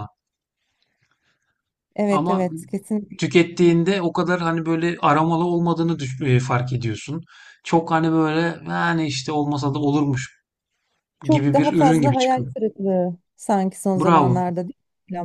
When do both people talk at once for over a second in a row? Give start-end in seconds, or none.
11.3-12.5